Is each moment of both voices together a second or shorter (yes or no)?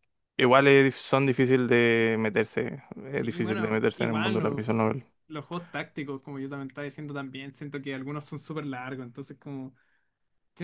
no